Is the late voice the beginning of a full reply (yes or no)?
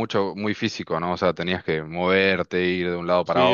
yes